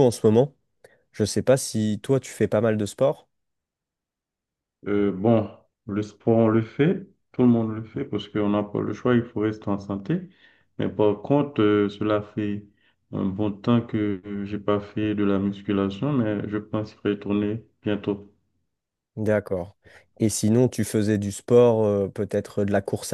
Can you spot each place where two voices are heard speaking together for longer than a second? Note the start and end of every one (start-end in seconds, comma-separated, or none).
none